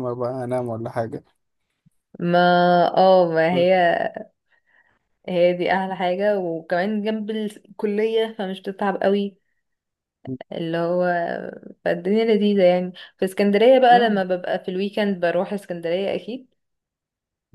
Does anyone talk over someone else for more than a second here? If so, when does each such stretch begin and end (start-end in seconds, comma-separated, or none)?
none